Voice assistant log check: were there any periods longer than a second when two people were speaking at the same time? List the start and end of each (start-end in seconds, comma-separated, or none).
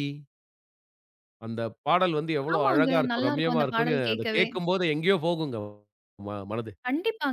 2.5-4.5